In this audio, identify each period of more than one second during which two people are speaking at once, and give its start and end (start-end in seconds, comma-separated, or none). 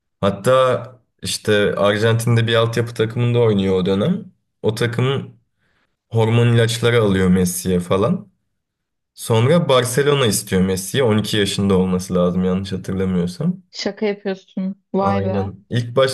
none